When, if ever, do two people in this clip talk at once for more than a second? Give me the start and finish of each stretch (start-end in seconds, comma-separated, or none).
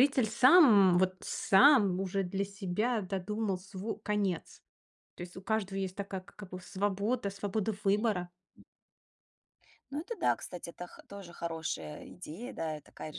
none